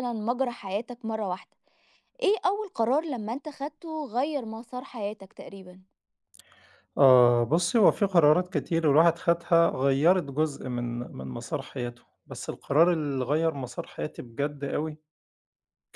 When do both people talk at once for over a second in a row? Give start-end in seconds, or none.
none